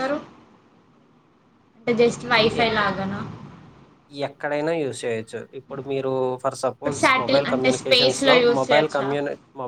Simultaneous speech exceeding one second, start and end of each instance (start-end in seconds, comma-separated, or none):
6.7-9.1